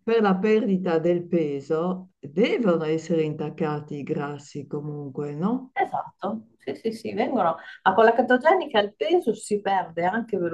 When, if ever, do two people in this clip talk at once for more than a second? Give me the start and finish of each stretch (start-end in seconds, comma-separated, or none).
none